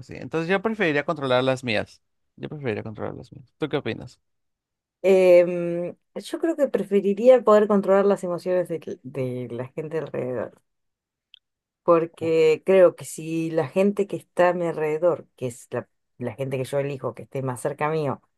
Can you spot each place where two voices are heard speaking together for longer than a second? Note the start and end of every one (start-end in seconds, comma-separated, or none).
none